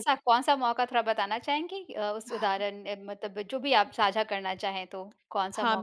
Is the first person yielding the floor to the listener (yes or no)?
yes